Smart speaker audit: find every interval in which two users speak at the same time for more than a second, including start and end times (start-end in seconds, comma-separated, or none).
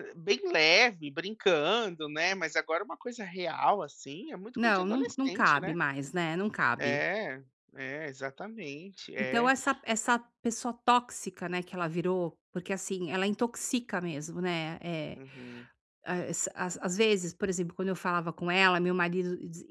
4.5-5.8